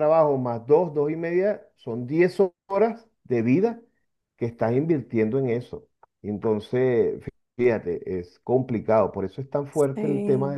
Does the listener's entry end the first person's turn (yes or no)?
no